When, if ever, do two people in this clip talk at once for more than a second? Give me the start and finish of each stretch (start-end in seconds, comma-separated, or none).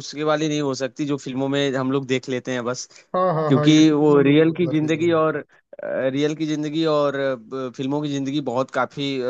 3.5-5.2